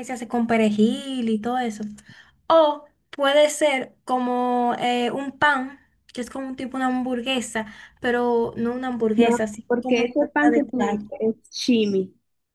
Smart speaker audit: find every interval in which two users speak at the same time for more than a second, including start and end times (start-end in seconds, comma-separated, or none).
9.2-11.1